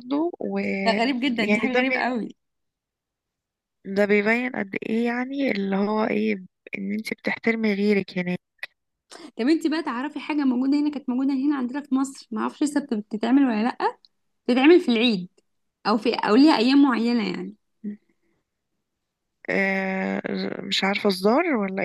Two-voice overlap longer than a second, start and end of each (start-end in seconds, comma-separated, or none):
0.8-2.1